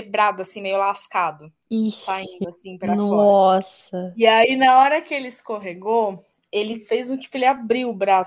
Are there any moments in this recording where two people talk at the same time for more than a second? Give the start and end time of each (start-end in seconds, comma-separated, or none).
1.9-3.4